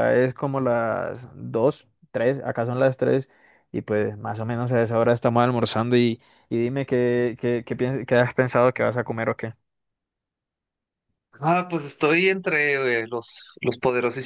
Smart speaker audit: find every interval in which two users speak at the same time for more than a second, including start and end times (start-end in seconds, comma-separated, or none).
none